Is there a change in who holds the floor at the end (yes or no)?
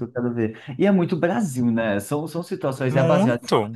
no